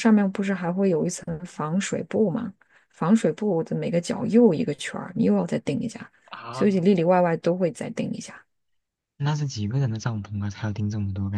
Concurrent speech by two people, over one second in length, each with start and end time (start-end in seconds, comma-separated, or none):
none